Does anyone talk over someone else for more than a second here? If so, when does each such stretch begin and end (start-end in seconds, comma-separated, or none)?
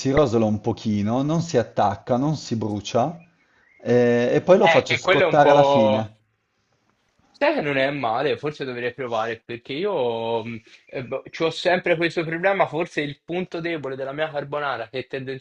4.9-6.1